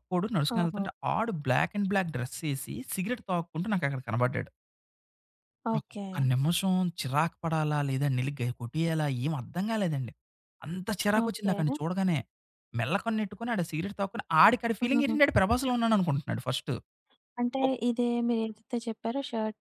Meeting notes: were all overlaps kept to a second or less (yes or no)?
yes